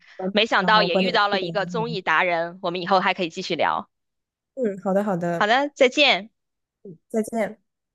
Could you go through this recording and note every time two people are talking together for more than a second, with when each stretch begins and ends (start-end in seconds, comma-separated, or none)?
0.6-2.0